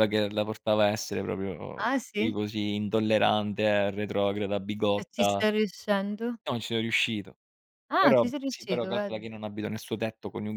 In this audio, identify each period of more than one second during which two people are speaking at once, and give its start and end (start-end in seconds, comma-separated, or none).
8.0-9.3